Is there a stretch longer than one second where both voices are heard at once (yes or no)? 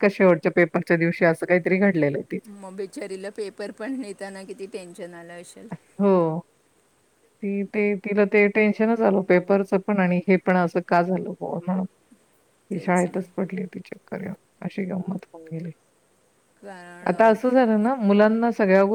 no